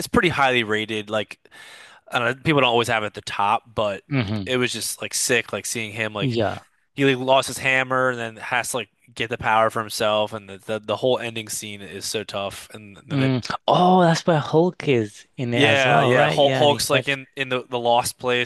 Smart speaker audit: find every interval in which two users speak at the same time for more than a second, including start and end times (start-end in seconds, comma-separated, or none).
15.5-17.2